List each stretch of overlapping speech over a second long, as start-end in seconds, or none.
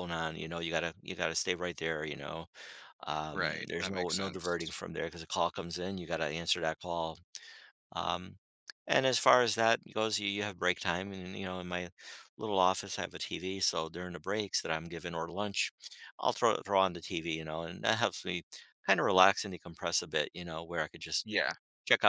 3.3-4.7